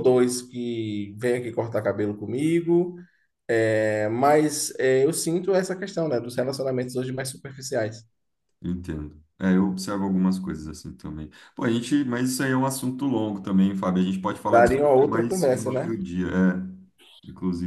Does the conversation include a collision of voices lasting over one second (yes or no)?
yes